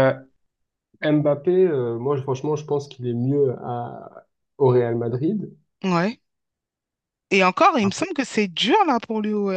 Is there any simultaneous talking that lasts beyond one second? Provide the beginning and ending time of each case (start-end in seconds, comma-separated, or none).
none